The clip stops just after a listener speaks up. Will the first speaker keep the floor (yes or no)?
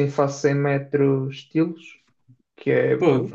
yes